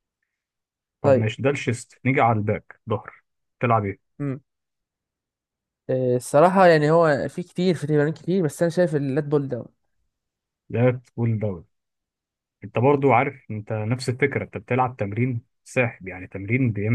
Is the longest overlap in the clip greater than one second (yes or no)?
no